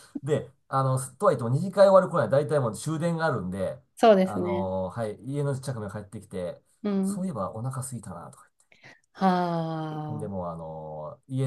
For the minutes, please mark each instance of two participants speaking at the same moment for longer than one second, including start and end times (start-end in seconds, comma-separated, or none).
none